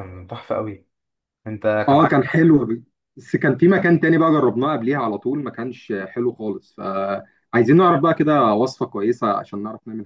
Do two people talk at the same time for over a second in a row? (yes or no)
no